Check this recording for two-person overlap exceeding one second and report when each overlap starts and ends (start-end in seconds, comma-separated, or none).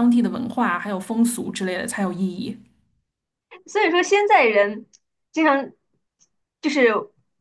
none